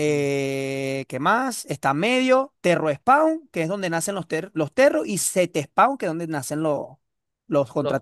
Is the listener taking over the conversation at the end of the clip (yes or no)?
yes